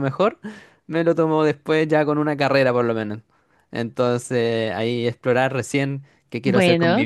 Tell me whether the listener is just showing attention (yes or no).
yes